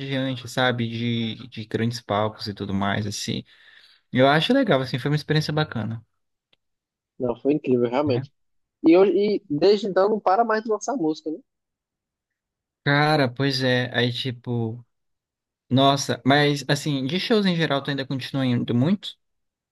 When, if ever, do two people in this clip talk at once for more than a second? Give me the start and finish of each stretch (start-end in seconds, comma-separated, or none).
none